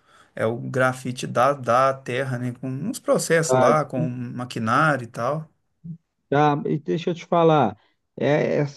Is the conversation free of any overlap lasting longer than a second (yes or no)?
yes